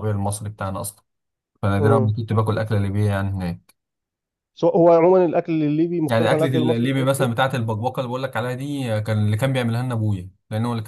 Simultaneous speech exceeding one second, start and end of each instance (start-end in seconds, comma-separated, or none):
6.1-7.3